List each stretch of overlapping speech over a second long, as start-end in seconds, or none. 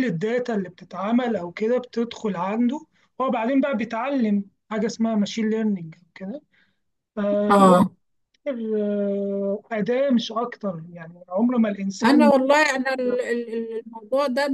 none